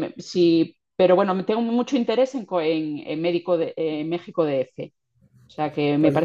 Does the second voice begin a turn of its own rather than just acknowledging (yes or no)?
no